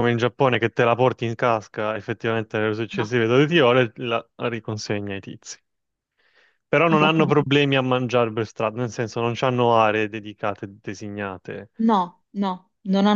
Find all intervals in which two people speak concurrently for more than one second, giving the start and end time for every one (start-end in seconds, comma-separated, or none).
none